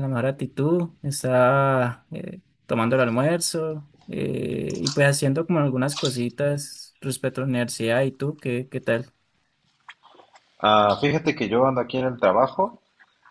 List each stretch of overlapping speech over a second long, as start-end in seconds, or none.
none